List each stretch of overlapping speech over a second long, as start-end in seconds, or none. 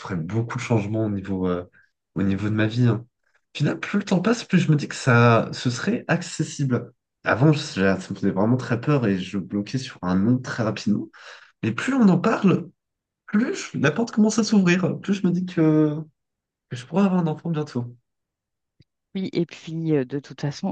none